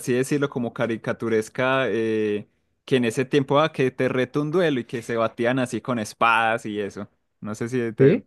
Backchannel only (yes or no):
yes